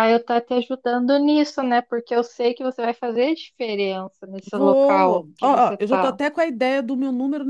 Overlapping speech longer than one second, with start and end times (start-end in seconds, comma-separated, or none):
4.5-6.2